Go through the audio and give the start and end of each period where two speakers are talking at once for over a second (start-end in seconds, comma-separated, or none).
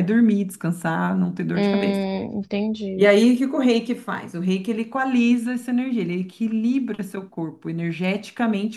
none